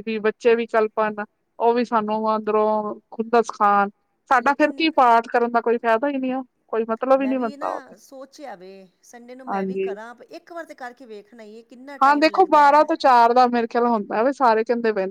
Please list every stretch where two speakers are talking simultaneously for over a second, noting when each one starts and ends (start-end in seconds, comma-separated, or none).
none